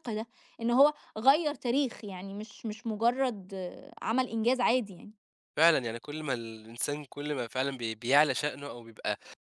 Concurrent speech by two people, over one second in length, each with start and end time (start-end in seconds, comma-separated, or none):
none